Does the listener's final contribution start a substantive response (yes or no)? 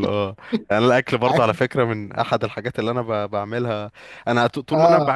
no